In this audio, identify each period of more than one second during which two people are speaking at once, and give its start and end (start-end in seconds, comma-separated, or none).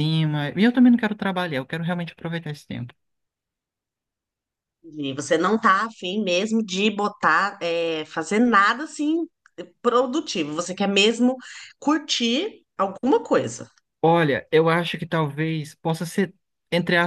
none